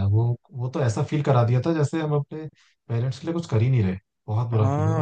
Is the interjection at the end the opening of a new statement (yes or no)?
yes